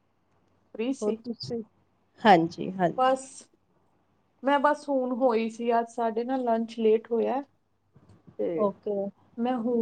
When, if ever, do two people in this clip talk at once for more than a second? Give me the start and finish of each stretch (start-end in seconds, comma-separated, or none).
none